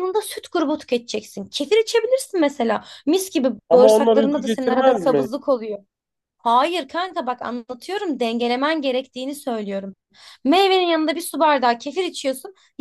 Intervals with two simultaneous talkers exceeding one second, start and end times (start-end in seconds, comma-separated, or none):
3.7-5.3